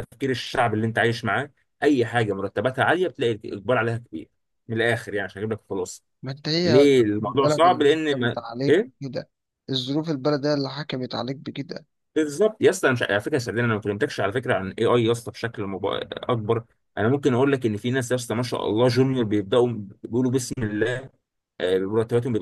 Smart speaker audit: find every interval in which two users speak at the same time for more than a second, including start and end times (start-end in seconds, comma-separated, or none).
6.7-8.9